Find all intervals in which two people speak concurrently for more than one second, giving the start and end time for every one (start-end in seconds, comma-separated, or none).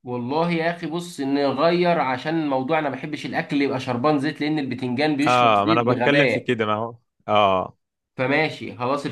5.3-6.5